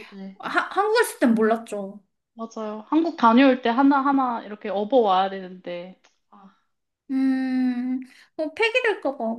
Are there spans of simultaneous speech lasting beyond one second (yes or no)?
no